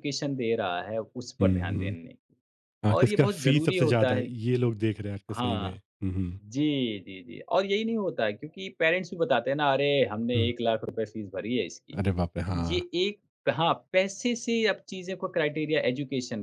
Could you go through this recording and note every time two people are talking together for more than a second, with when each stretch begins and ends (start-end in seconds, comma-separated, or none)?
3.0-4.2